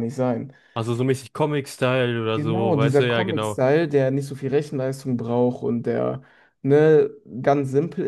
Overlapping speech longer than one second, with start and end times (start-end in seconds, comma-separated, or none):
2.3-3.6